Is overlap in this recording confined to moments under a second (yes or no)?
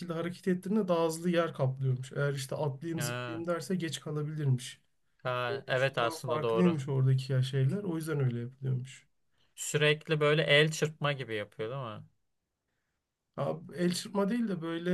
no